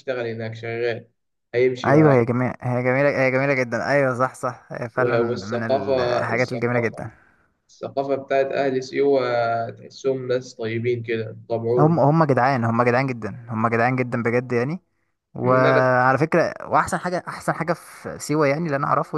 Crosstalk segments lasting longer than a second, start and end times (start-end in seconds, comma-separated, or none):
5.0-7.0